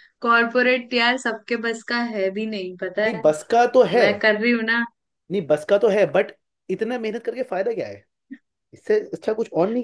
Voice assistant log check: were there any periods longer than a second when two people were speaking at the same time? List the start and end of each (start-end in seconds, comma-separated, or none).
none